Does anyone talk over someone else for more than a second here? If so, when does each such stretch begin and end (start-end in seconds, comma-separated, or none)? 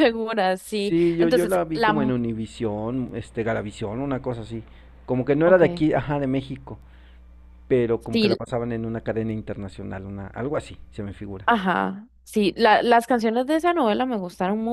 0.6-2.1